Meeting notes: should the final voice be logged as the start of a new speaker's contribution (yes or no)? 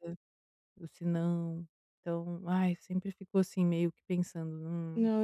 yes